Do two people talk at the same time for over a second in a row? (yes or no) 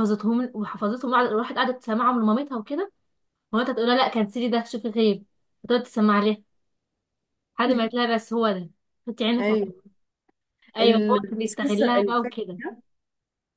yes